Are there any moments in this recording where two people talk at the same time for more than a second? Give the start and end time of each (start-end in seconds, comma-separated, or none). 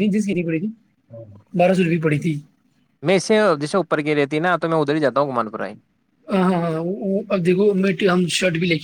none